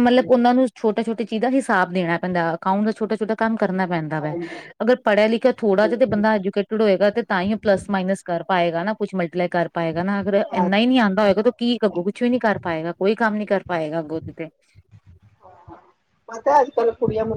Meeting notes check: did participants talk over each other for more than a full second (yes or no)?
no